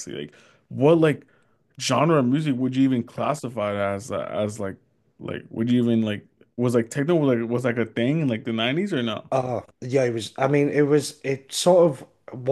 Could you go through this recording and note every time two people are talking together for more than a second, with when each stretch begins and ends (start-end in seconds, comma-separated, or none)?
none